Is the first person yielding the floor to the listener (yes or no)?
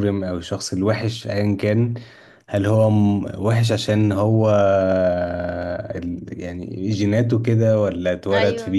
no